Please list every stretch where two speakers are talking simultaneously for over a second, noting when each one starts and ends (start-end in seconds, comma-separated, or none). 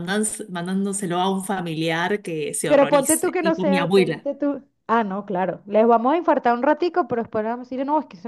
2.7-4.3